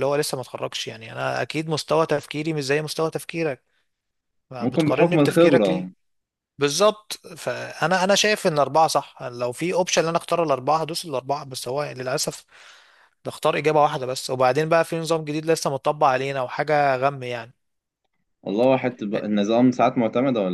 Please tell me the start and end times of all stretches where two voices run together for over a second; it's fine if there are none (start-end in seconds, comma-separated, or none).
4.6-5.9